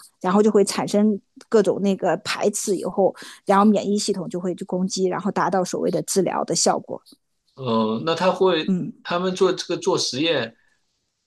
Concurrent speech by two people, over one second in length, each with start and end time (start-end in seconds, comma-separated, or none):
none